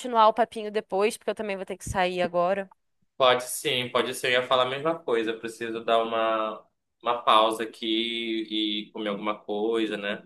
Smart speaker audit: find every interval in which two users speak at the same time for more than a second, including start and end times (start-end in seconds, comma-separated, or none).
none